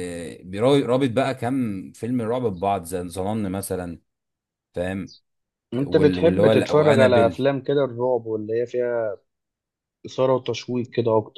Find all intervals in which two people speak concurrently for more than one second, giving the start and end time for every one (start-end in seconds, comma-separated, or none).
5.8-7.4